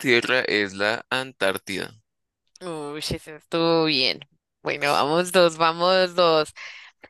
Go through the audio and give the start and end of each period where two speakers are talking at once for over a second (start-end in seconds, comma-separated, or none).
none